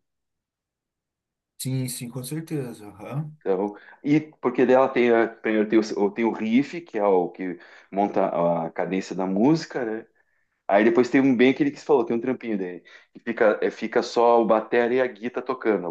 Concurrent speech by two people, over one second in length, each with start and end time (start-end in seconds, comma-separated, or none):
none